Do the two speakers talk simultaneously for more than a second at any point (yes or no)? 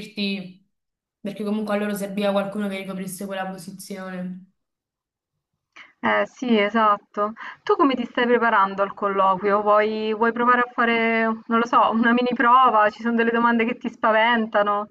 no